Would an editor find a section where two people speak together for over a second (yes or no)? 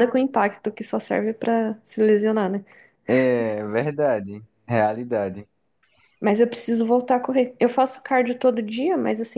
no